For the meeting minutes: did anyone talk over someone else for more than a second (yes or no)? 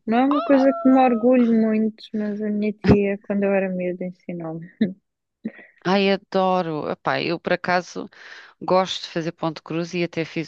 no